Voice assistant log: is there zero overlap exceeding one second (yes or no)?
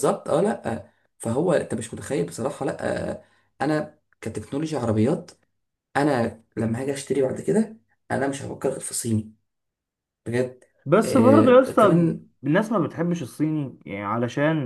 no